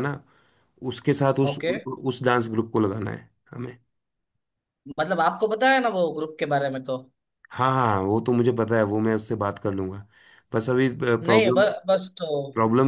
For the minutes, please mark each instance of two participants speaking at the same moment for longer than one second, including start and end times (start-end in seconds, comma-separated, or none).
none